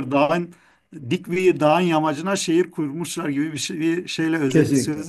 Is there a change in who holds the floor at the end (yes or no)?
yes